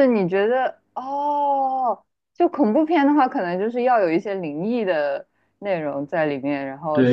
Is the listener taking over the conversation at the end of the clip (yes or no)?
yes